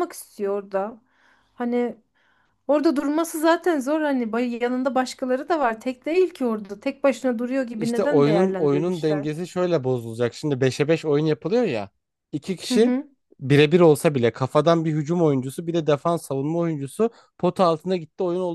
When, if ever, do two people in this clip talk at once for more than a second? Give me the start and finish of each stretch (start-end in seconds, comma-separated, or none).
7.8-9.3